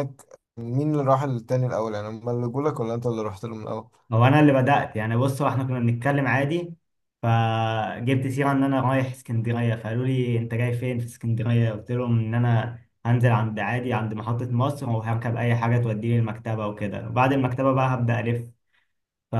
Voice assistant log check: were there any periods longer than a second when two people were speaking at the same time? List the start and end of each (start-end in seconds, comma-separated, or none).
none